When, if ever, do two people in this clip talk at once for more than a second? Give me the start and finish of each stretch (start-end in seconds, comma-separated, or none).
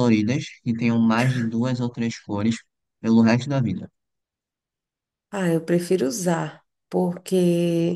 none